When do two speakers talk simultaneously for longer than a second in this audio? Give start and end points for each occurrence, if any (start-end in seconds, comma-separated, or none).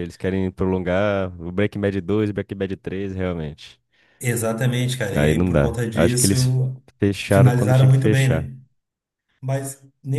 5.1-6.3, 7.3-8.5